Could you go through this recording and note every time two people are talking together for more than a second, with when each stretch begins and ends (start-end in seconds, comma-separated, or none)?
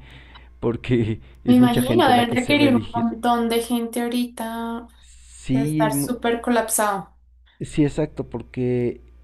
1.5-3.1